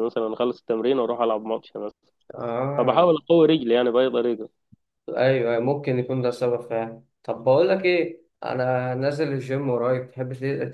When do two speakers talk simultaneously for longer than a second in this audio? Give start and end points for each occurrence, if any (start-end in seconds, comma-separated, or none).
none